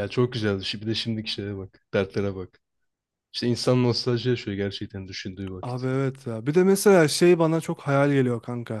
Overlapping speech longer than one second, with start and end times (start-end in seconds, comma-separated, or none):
none